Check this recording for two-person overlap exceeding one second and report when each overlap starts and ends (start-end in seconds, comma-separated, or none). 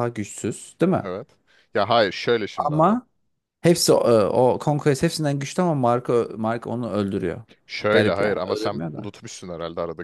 7.9-9.1